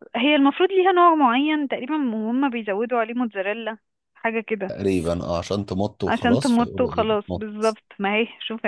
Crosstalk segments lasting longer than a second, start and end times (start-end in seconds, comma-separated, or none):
6.1-7.5